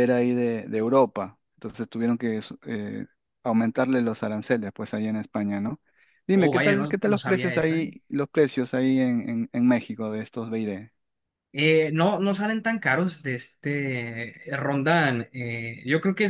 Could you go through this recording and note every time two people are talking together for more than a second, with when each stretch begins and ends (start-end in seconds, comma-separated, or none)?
6.3-7.9